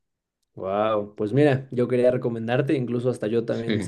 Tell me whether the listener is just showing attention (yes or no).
yes